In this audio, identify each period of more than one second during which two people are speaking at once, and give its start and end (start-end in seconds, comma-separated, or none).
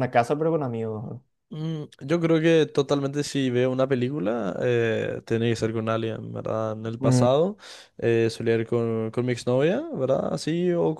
none